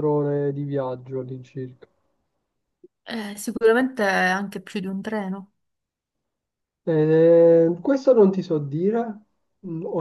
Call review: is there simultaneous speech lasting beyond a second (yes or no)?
no